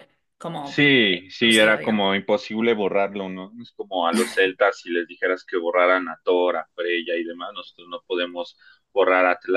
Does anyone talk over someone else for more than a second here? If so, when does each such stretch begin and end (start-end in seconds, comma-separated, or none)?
0.6-2.0